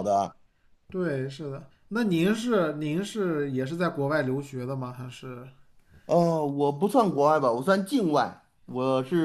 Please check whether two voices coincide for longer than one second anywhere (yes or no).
no